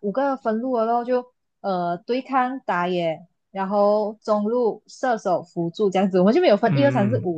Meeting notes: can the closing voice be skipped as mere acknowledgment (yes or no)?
no